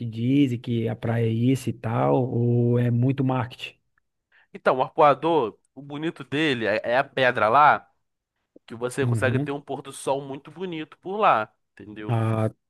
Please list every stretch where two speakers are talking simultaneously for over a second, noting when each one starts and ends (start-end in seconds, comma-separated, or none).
none